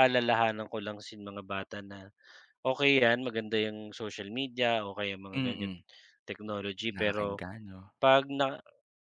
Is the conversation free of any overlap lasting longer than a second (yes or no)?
yes